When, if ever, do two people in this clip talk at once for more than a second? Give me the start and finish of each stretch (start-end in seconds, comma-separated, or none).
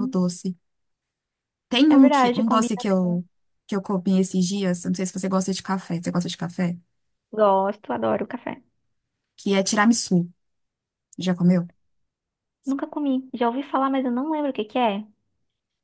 1.9-3.2